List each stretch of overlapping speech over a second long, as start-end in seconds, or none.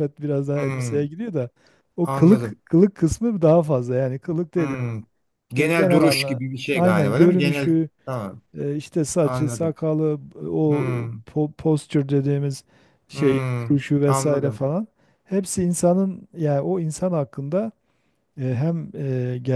5.6-7.9, 13.1-14.6